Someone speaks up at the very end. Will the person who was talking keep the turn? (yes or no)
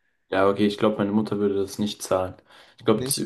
yes